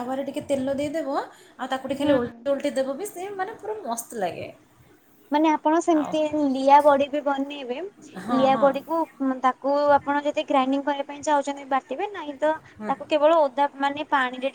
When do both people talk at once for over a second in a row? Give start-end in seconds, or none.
none